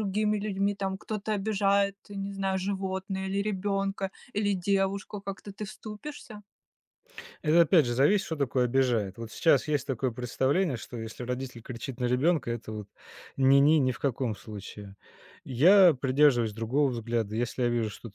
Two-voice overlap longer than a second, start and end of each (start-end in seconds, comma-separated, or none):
none